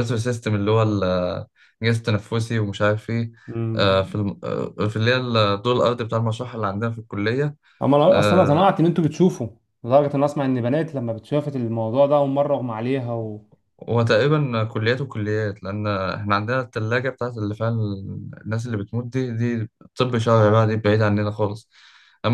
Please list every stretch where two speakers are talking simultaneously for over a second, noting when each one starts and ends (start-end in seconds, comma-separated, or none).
none